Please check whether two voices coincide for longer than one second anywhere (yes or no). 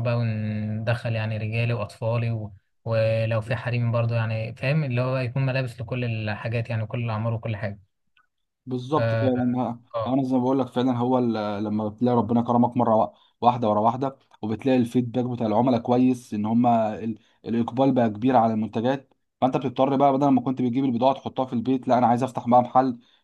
no